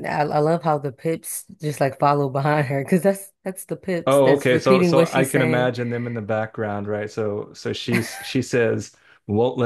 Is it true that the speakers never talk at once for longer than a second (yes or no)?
no